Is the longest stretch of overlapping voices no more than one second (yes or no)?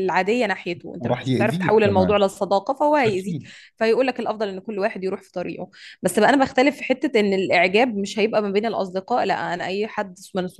no